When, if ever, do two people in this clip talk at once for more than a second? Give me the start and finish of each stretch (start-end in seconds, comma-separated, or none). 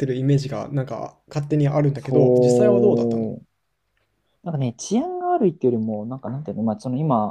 1.9-3.4